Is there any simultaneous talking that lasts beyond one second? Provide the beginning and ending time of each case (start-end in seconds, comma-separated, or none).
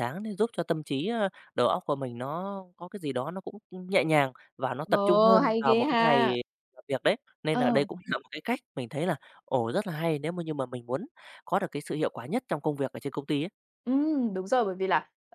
4.8-6.4